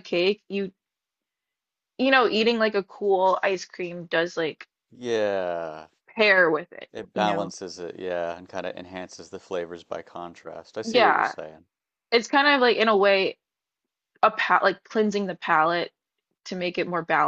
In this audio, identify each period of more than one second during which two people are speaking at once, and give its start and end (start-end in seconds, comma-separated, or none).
none